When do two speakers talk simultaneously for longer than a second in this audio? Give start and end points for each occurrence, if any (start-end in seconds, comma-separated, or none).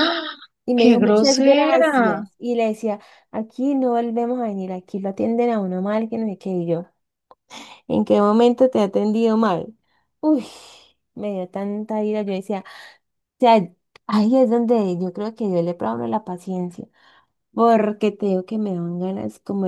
0.8-2.2